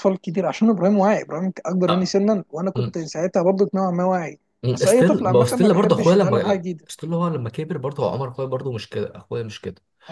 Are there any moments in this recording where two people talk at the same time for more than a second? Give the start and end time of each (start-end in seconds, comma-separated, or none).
4.6-6.9